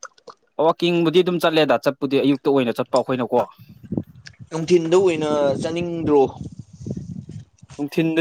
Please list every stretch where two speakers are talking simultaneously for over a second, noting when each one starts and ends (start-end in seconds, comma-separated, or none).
none